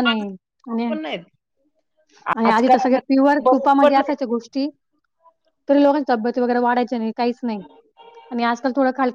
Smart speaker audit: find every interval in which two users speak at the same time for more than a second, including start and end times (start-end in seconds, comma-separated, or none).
2.4-4.1